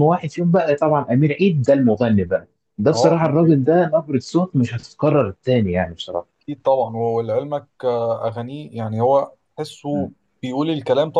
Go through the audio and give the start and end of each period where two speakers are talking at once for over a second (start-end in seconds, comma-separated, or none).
none